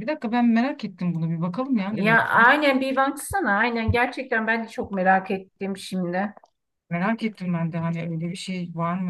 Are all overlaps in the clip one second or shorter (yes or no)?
yes